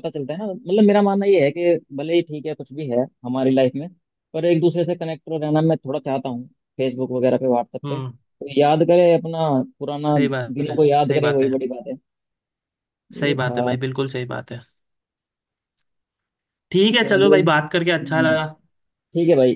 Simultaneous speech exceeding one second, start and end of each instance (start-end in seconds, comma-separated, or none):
10.1-11.5, 17.0-18.4